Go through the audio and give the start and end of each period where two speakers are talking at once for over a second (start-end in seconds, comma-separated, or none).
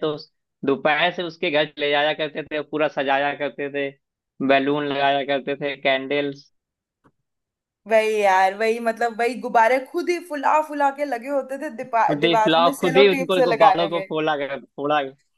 11.9-14.1